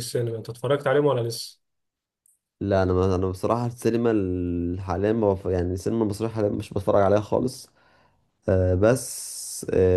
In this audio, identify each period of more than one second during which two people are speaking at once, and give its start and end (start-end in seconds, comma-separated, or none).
none